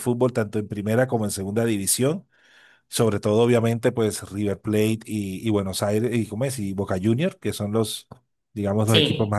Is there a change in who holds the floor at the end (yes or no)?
no